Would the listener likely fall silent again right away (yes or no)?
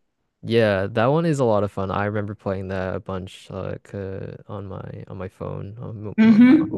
no